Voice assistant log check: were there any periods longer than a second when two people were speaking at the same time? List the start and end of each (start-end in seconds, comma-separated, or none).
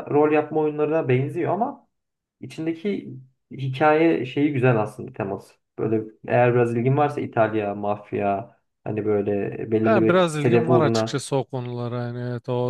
9.8-11.2